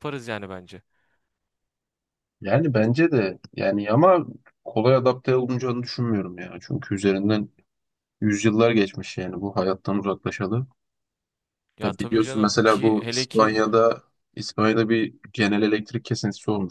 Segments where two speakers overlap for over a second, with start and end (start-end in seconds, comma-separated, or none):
11.8-13.5